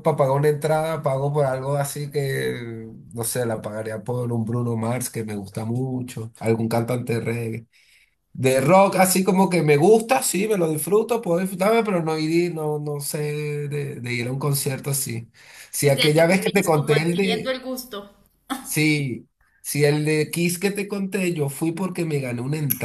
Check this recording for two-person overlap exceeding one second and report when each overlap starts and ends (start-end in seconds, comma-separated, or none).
15.8-17.5